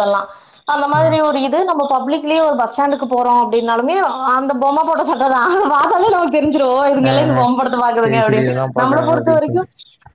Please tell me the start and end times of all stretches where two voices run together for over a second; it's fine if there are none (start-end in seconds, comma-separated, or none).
8.0-9.6